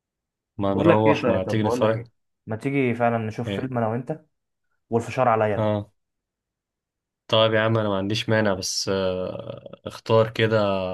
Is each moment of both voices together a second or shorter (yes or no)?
no